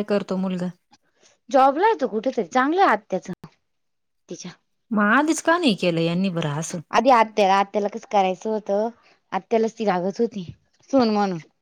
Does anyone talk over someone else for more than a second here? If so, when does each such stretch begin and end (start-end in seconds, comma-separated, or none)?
none